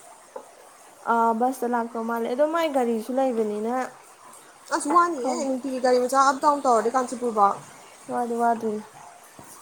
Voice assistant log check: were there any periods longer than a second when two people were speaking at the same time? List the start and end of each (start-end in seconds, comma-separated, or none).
none